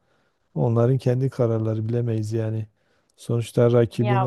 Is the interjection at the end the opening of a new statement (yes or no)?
no